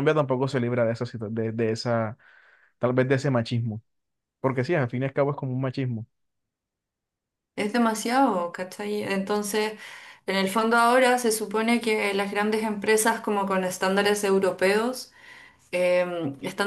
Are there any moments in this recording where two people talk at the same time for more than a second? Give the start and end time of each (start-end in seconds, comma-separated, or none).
none